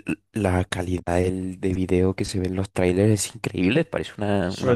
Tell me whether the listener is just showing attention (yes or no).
no